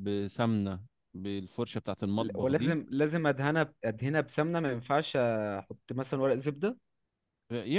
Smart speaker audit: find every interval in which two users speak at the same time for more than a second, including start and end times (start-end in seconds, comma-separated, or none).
none